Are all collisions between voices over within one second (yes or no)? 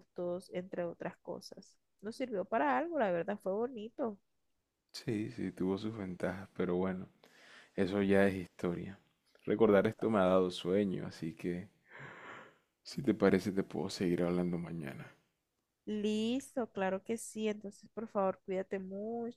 yes